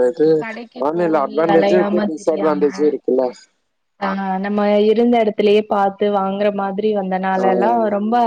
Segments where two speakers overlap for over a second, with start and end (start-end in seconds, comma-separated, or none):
1.0-2.6